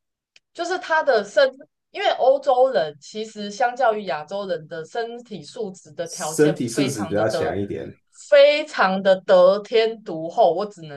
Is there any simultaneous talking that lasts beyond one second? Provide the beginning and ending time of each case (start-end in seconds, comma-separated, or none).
6.0-7.5